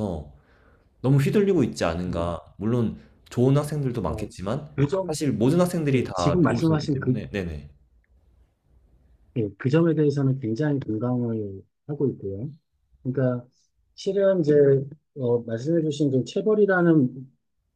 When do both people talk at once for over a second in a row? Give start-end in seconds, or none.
5.9-7.2